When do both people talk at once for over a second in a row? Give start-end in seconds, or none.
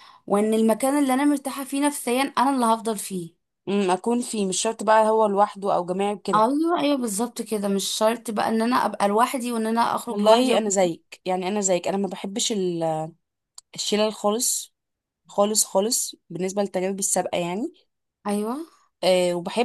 none